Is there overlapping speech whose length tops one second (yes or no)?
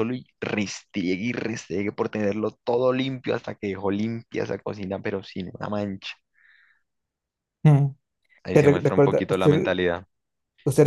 yes